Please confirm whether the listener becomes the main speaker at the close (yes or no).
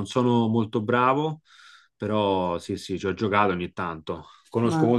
no